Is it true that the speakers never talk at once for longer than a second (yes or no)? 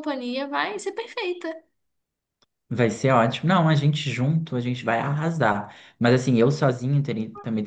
yes